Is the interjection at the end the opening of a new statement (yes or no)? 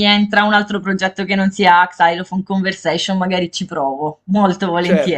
yes